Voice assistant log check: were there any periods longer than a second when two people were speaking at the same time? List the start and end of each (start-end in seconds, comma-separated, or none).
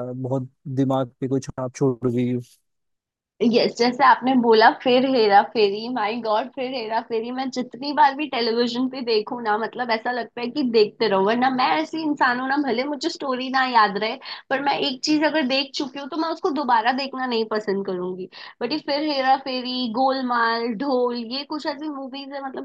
none